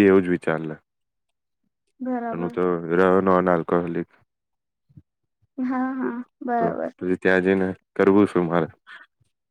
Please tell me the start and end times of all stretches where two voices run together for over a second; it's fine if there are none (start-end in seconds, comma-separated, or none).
none